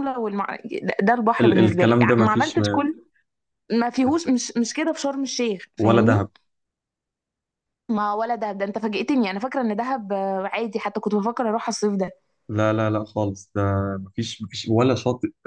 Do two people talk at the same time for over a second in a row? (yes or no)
yes